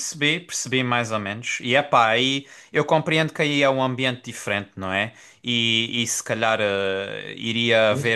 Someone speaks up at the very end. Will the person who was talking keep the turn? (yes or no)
yes